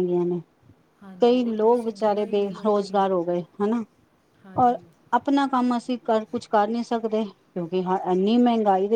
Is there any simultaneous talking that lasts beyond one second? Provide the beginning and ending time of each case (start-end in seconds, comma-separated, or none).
1.2-3.0